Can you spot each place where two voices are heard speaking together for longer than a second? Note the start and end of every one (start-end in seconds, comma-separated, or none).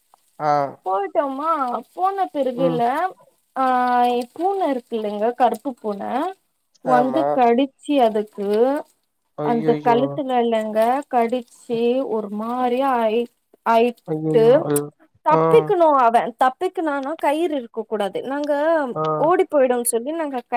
none